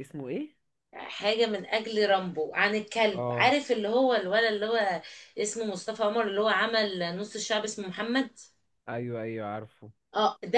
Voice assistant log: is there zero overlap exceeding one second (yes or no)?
yes